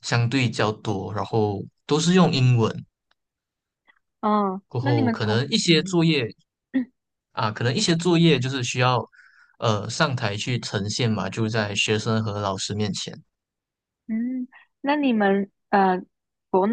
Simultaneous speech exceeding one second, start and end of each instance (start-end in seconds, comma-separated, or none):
4.7-6.1